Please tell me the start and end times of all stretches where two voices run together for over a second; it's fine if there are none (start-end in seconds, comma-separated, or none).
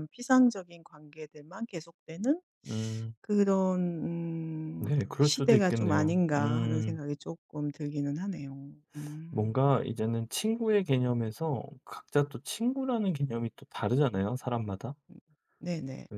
4.8-7.0